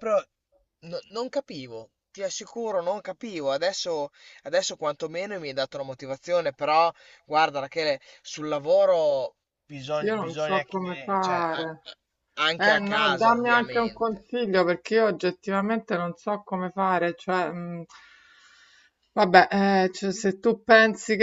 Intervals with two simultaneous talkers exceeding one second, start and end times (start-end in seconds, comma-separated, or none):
10.0-11.7, 12.6-14.2